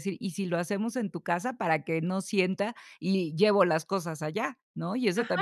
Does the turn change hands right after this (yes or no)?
yes